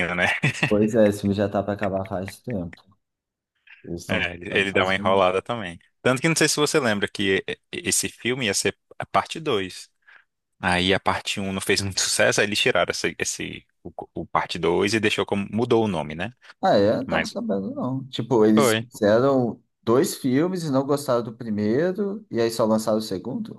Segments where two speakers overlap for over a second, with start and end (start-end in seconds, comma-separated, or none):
4.1-5.4